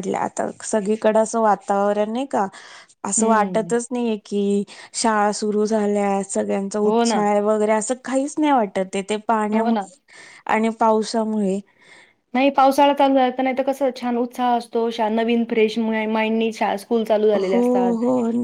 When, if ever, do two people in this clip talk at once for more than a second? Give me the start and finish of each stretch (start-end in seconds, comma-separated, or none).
none